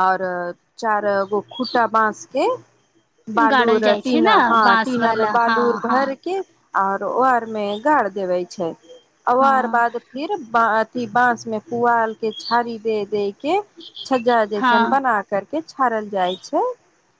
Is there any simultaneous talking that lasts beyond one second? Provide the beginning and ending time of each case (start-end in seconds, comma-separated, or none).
3.5-6.0